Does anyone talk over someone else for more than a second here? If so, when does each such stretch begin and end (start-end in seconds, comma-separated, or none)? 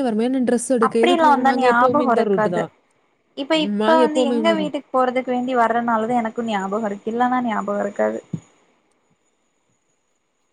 0.9-2.6